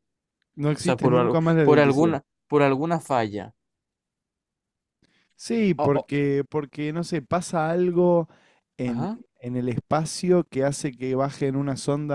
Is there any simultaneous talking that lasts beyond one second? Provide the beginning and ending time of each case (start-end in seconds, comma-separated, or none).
0.8-2.2